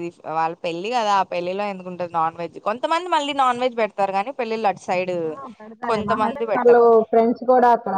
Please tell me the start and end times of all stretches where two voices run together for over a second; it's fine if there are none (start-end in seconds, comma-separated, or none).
none